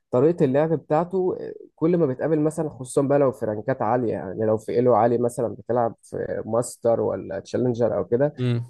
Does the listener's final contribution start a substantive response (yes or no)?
no